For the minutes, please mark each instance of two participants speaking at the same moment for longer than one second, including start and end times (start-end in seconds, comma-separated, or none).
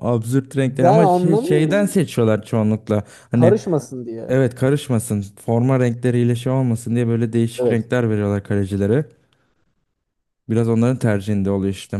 0.6-1.9